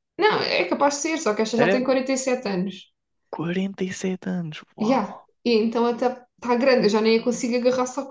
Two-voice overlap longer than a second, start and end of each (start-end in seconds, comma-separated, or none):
none